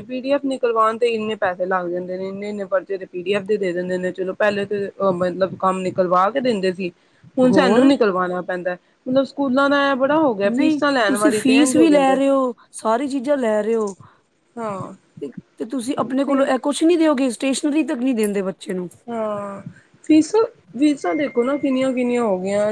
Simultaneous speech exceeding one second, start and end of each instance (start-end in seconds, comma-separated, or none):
10.6-12.2